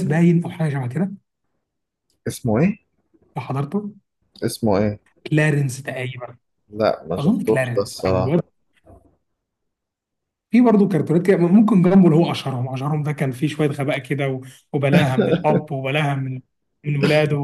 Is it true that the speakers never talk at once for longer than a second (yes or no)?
no